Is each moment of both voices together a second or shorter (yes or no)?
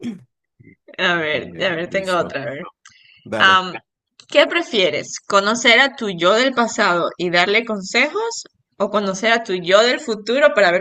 no